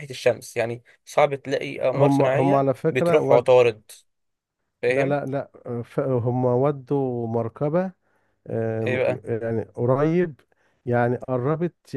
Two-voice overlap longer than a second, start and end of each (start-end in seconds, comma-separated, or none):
1.9-3.5